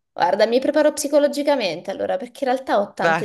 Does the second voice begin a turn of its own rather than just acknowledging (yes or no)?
no